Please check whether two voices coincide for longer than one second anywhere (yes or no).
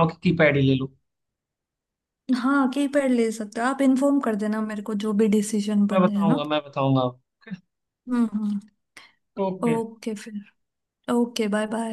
no